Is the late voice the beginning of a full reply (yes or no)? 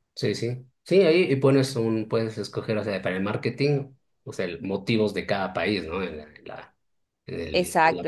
yes